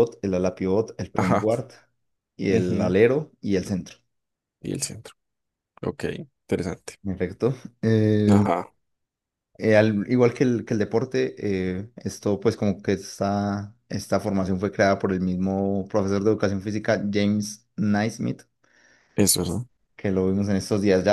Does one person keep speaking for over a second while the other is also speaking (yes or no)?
no